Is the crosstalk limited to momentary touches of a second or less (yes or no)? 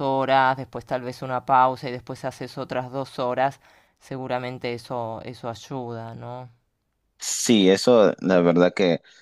yes